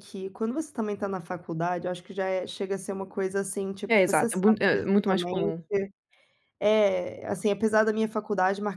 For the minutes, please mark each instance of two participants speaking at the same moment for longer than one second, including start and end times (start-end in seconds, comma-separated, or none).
3.9-5.6